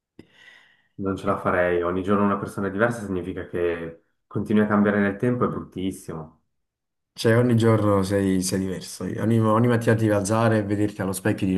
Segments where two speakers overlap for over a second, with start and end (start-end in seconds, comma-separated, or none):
none